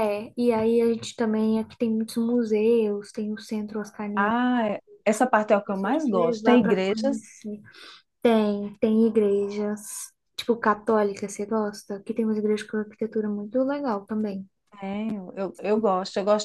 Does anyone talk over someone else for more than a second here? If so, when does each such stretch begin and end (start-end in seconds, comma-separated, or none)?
5.6-7.3